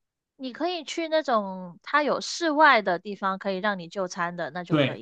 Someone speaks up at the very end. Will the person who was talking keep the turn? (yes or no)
no